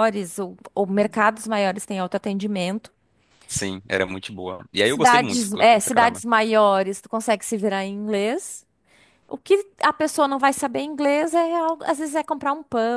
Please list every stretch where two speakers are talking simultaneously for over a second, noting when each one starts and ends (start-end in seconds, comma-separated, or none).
4.8-6.2